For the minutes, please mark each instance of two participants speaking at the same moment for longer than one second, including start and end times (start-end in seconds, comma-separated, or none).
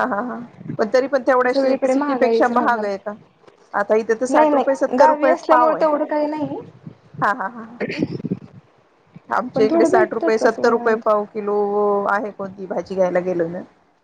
1.5-2.9, 4.3-5.8, 9.5-10.9